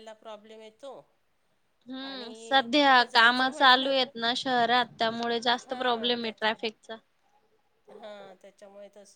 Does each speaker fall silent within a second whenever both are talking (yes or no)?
no